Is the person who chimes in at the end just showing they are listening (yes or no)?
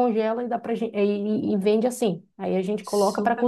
yes